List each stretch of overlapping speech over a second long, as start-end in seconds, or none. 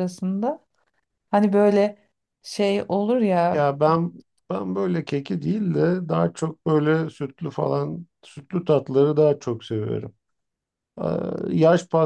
none